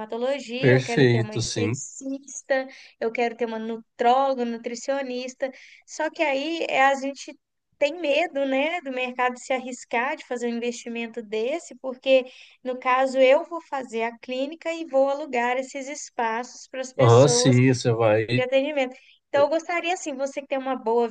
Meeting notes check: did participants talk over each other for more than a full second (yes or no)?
yes